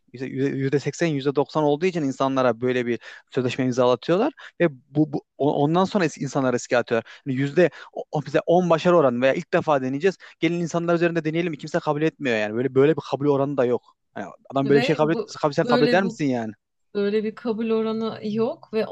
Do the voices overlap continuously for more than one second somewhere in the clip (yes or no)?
yes